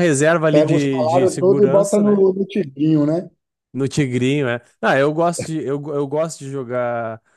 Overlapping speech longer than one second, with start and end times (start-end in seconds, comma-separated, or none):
0.5-2.2